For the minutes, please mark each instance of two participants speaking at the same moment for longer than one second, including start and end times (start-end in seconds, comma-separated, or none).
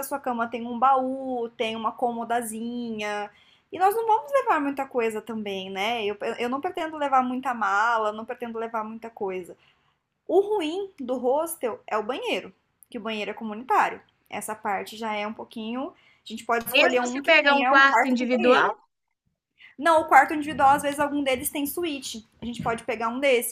16.7-18.7